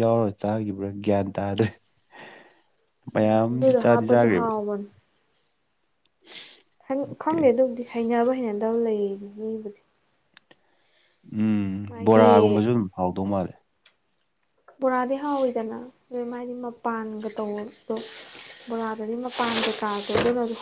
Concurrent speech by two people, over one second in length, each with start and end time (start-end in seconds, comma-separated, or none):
3.1-4.5